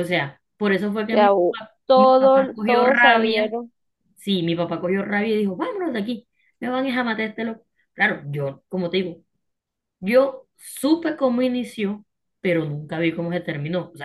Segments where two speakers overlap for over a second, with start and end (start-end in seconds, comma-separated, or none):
1.1-3.5